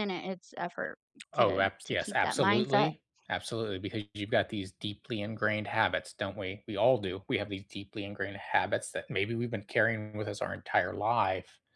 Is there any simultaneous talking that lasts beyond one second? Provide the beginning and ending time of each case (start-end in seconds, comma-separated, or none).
1.4-2.9